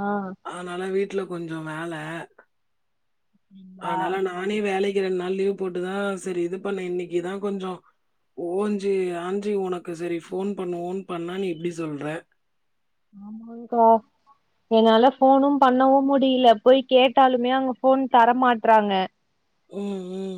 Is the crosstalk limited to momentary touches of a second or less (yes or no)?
yes